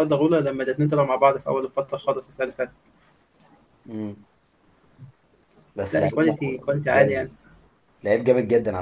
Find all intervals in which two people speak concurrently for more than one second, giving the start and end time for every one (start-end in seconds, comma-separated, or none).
5.9-7.3